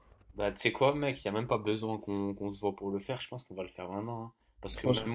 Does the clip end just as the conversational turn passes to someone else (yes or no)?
no